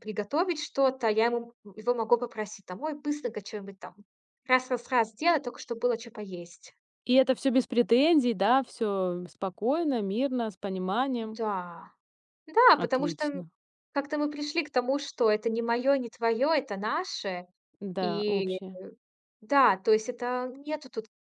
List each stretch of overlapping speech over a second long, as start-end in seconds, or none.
none